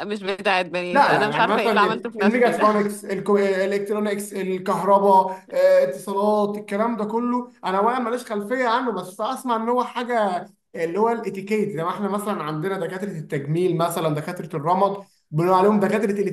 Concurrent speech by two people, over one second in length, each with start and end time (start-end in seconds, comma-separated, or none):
0.9-2.6